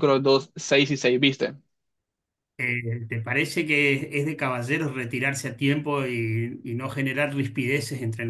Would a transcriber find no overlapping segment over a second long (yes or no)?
yes